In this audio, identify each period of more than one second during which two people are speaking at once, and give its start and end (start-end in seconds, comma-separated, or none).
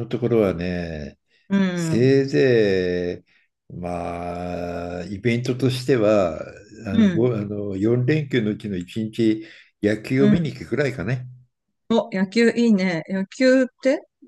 none